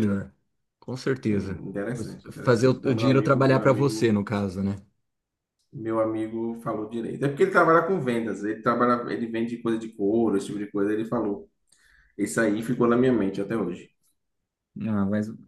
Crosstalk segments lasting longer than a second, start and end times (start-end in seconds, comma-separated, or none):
1.3-4.2